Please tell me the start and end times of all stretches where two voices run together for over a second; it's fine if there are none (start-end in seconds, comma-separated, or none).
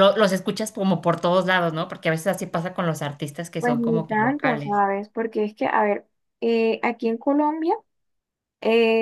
3.6-4.8